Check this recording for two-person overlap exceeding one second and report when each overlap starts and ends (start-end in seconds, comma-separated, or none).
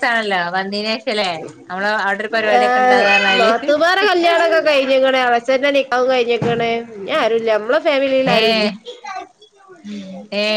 none